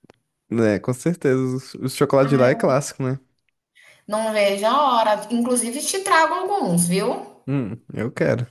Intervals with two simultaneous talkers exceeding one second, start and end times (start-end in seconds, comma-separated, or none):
none